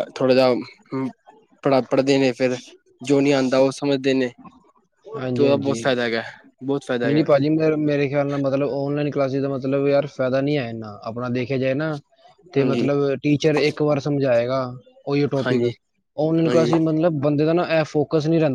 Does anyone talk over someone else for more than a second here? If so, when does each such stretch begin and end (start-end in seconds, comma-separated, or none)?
none